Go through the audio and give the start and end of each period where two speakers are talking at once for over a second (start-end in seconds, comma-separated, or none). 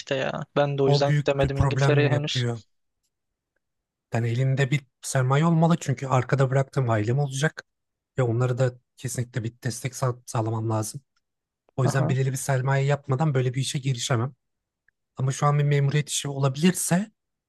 0.8-2.4